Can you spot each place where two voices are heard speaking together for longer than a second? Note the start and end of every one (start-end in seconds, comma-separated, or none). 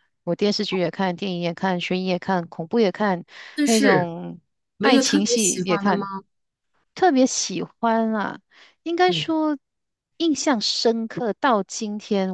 4.8-6.0